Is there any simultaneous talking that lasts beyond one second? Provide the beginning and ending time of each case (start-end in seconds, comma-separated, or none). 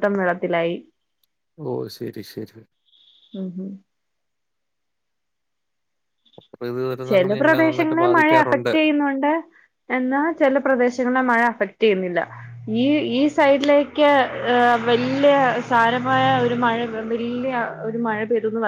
7.1-8.7